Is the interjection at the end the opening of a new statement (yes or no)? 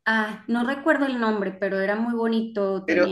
no